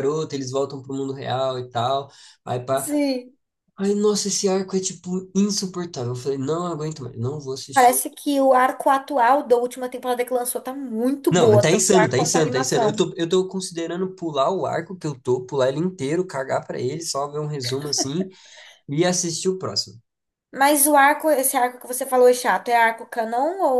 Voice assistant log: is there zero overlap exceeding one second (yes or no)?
no